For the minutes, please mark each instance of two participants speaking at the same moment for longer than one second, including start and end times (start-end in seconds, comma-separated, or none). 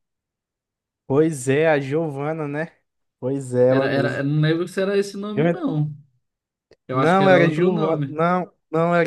6.9-8.2